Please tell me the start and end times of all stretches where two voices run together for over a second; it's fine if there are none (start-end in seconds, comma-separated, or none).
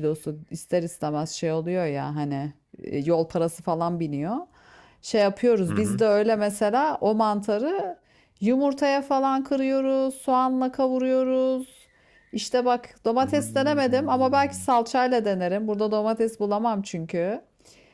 13.2-14.5